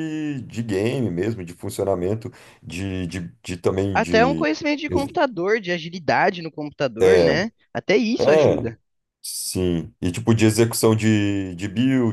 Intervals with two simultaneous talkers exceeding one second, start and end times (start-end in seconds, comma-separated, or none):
none